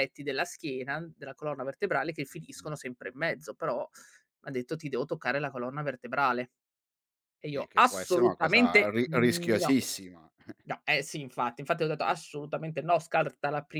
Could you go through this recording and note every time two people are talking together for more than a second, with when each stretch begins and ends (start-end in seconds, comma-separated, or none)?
7.5-9.8